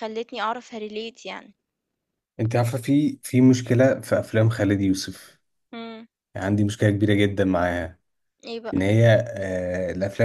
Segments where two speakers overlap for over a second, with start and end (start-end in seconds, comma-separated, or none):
none